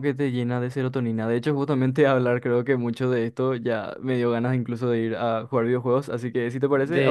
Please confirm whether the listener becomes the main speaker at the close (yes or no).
yes